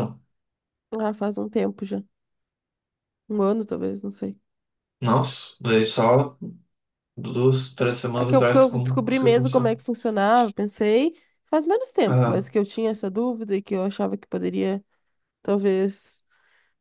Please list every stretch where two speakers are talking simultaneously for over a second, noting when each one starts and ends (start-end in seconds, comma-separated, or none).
8.2-9.7